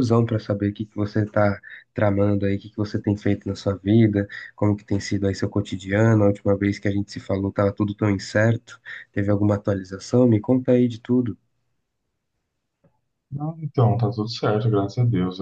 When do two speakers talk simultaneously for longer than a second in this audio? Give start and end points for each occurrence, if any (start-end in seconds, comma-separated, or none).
none